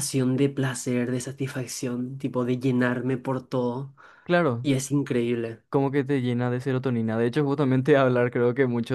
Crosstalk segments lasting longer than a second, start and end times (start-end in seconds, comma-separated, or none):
none